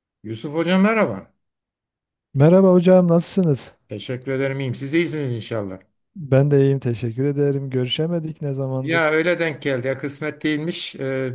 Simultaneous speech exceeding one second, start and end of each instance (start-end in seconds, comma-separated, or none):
none